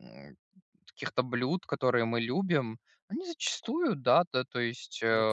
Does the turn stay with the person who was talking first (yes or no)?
yes